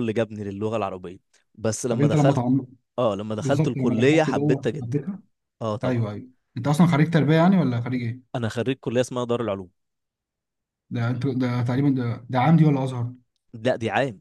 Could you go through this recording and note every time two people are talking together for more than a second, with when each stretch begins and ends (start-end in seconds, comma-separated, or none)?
3.4-5.0